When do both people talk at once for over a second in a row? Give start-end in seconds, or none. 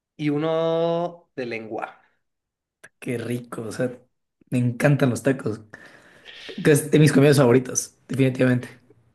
none